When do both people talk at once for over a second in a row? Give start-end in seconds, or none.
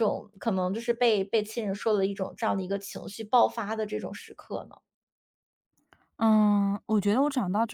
none